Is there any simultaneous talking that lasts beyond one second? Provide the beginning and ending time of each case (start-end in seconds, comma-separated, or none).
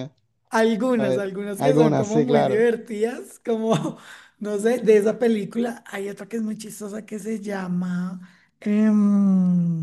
1.0-2.7